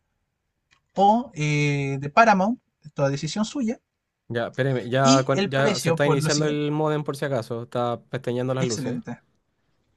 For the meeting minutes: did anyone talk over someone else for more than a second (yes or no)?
yes